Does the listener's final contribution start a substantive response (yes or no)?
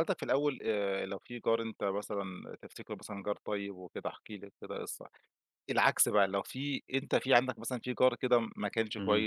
no